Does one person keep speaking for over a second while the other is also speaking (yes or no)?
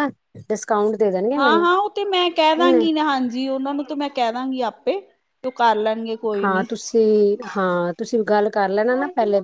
no